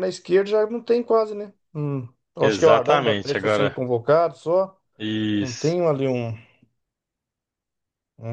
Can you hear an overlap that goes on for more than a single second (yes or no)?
yes